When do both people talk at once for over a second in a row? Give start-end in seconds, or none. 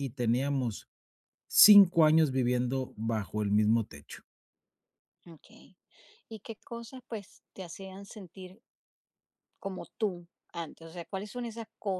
none